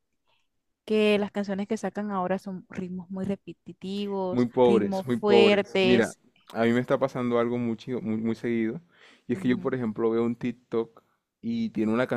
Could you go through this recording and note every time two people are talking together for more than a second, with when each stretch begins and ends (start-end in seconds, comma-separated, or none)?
4.3-6.2